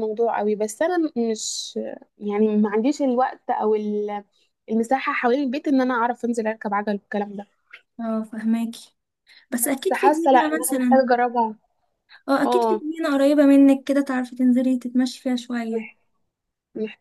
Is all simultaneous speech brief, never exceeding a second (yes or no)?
no